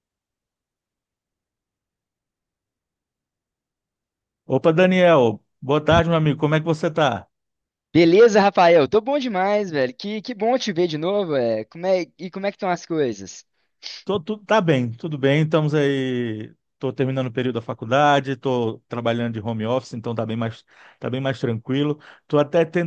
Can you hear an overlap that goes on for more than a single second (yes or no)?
no